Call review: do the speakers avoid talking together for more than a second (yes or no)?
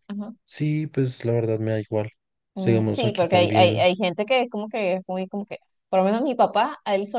no